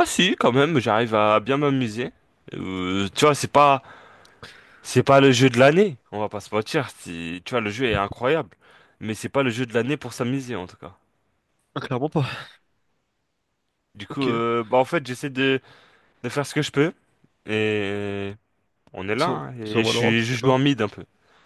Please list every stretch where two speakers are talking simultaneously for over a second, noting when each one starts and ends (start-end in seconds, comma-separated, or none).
19.1-20.6